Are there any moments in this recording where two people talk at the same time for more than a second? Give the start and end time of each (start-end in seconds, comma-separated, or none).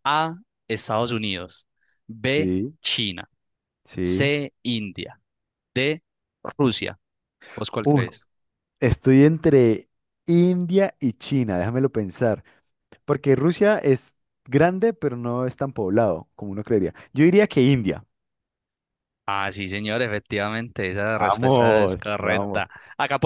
21.1-22.6